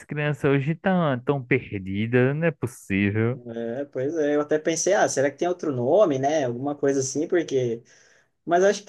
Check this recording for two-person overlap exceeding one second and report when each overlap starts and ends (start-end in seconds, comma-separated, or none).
none